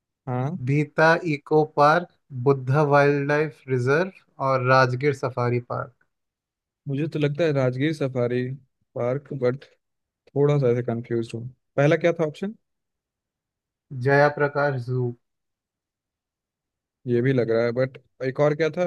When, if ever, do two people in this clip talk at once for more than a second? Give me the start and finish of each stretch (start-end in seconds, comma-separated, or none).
none